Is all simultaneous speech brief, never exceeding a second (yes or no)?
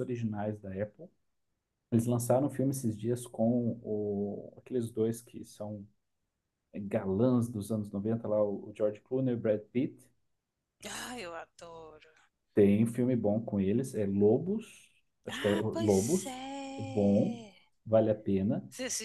no